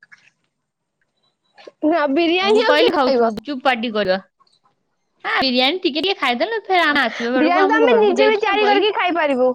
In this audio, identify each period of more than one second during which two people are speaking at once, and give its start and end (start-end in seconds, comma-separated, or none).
7.4-8.9